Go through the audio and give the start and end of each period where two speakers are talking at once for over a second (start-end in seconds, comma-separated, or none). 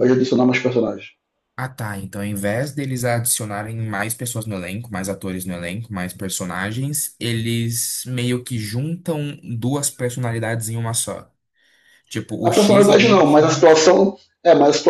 12.4-13.7